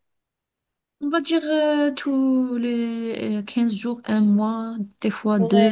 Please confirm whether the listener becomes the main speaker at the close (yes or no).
yes